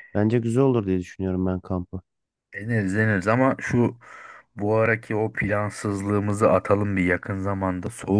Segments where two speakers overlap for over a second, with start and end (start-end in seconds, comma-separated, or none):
none